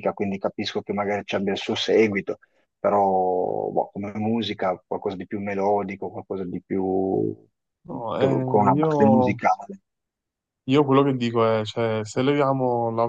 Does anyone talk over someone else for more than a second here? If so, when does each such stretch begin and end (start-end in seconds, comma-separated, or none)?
7.9-9.4